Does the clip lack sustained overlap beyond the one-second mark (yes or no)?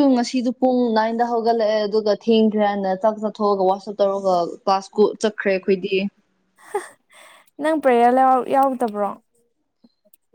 yes